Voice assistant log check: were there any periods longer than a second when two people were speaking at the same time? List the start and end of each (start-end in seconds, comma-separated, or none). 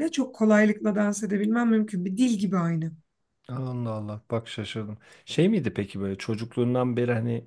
none